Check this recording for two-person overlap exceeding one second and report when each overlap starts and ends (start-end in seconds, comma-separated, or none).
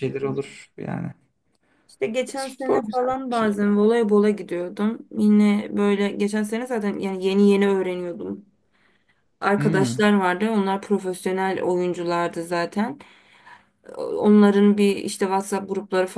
2.4-3.8